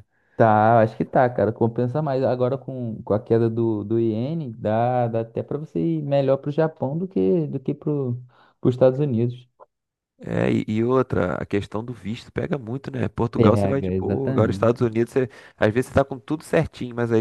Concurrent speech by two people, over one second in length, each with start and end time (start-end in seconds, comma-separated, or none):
13.3-14.7